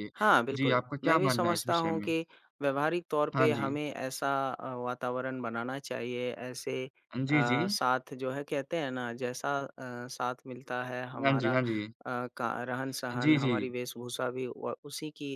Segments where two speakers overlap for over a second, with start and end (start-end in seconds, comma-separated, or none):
0.5-2.1